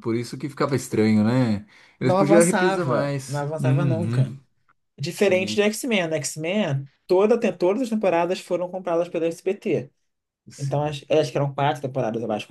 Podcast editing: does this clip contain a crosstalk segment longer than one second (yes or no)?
yes